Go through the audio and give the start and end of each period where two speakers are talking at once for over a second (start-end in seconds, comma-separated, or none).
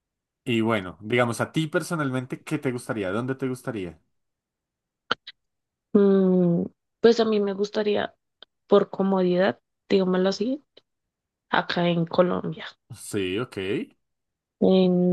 none